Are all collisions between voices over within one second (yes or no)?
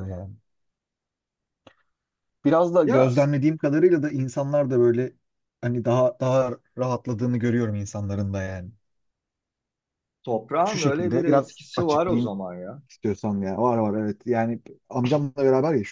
no